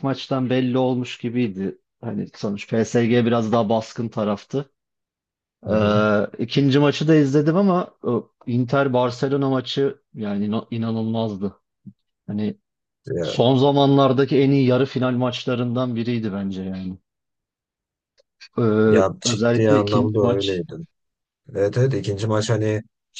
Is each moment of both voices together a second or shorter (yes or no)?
no